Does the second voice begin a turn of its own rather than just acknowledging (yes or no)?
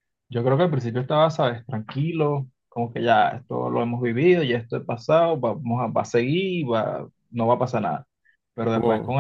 no